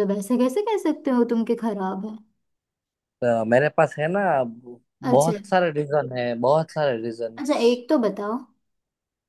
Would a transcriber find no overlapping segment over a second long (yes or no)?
yes